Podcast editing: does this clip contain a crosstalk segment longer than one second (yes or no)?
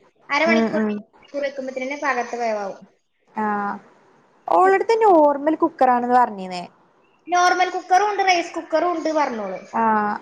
no